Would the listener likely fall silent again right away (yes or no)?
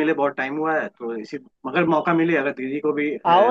no